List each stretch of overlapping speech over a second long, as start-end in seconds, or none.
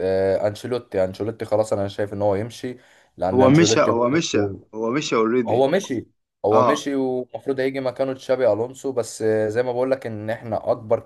none